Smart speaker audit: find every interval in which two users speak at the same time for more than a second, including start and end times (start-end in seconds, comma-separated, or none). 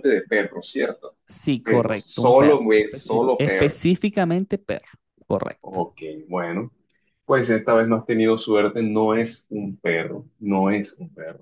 1.6-4.0